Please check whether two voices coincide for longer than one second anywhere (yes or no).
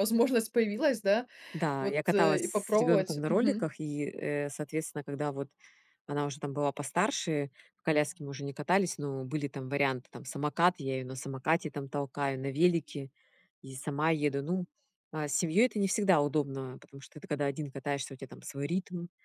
yes